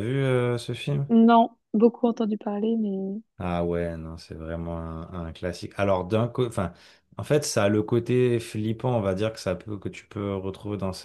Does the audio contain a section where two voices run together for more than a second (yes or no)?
no